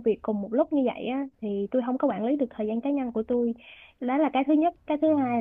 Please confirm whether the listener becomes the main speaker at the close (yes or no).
no